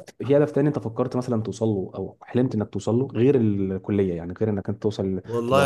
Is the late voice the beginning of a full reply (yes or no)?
yes